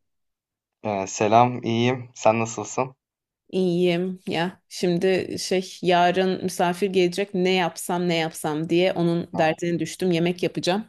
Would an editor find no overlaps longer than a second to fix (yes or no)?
yes